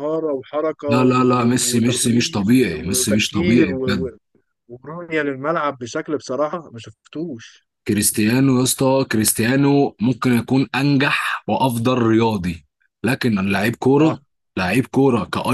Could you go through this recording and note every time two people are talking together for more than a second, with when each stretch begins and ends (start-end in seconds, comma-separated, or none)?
0.9-3.7